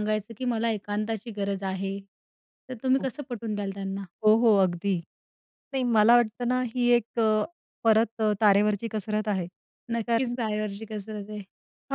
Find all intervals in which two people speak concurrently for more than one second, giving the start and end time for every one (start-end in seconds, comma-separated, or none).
none